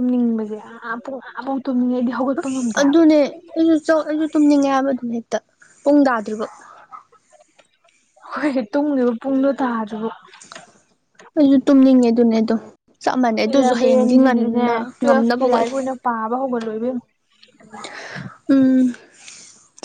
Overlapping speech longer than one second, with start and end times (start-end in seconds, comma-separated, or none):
13.5-15.7